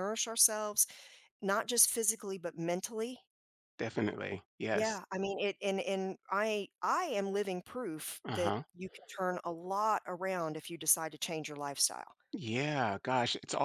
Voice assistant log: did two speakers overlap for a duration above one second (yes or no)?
no